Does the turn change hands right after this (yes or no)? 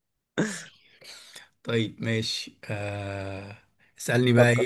no